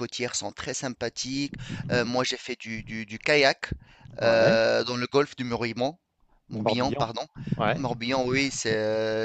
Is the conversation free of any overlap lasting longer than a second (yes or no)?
yes